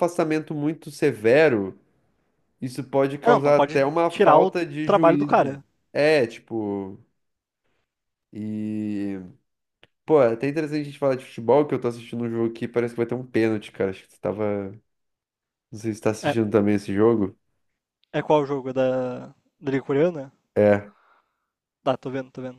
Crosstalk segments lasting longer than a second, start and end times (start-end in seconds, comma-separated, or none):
3.2-5.6